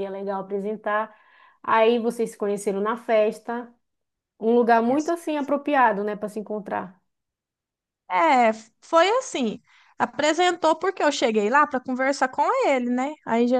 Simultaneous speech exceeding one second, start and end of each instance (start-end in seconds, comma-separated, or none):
none